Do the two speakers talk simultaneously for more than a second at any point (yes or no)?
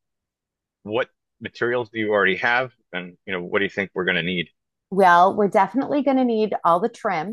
no